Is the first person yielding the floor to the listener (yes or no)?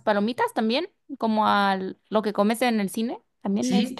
yes